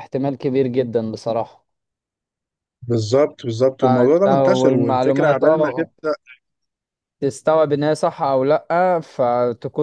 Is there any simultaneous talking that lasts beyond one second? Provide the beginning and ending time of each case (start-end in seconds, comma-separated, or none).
3.8-5.9